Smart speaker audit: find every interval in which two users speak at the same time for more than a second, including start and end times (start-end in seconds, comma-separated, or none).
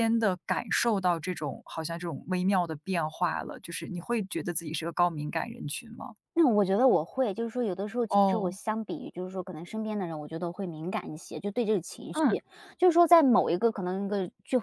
none